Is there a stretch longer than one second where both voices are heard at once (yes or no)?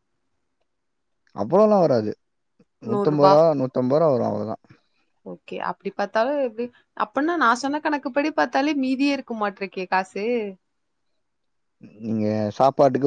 no